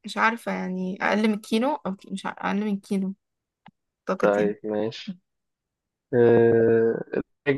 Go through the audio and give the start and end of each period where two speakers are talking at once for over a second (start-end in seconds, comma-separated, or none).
none